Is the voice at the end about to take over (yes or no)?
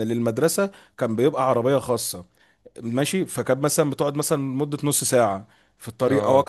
no